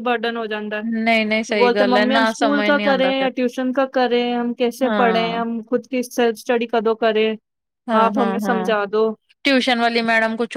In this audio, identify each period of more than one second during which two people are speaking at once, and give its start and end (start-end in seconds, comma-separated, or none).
1.6-3.3